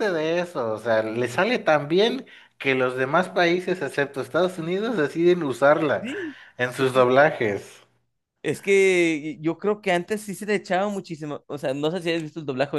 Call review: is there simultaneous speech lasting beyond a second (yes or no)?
no